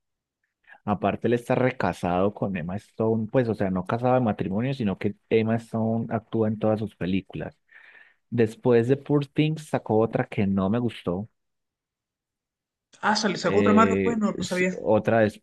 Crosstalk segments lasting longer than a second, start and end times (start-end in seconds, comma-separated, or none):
13.4-14.8